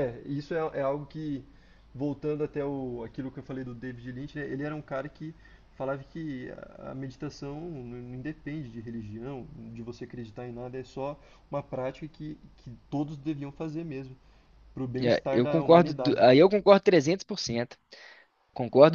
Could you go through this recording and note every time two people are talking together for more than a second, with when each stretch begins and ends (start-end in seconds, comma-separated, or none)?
15.0-16.2